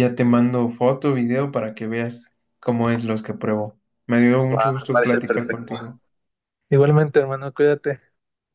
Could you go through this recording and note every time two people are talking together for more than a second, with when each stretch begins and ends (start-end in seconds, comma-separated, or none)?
4.5-5.7